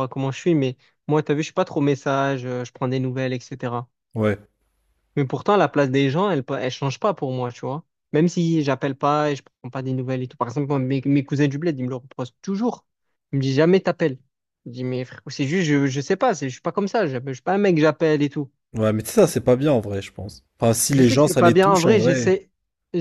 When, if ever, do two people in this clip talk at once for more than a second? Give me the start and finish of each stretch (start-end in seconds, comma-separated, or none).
20.9-22.4